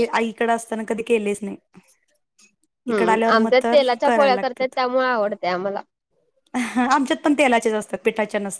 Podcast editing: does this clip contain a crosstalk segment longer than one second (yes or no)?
no